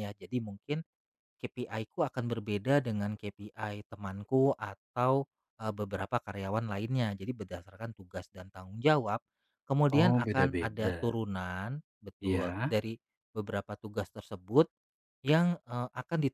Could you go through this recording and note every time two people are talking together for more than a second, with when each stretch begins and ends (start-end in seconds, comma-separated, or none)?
9.9-11.1